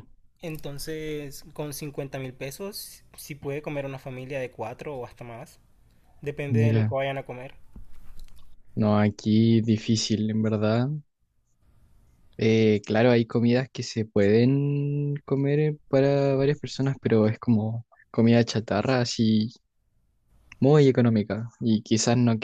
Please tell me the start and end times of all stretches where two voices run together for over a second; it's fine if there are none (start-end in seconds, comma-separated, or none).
none